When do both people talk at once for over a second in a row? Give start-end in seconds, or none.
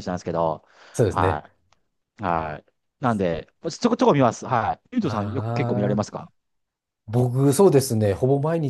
none